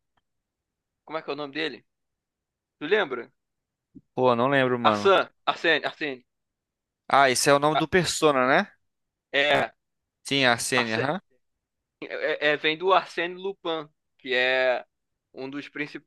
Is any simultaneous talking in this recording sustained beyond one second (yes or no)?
no